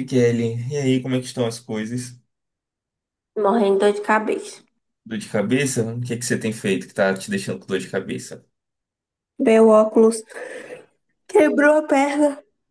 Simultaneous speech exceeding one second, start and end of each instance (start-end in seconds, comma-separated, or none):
none